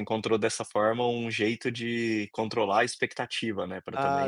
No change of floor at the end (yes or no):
yes